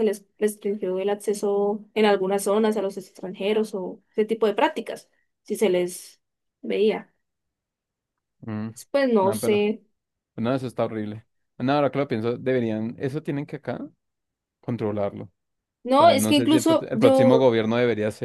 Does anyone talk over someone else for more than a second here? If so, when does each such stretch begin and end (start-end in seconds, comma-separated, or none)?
16.0-17.5